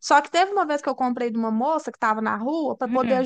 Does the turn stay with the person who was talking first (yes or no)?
yes